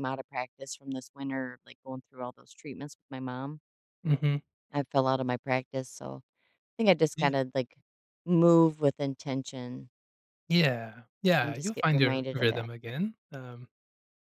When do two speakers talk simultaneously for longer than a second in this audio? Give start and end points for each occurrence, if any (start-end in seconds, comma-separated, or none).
11.4-12.7